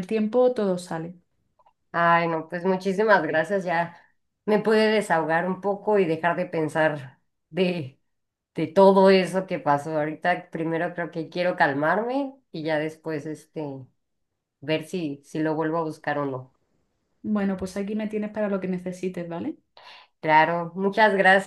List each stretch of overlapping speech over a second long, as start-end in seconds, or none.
none